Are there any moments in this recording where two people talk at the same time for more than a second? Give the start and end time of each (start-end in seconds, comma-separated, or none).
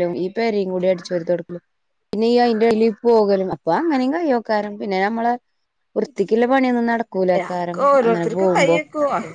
7.2-8.8